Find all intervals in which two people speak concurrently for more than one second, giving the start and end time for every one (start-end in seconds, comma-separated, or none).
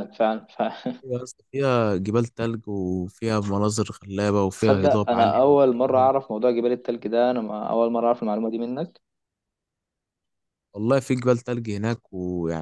4.6-6.1